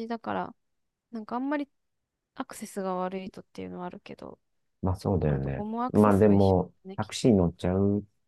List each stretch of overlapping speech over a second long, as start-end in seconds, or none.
5.2-7.3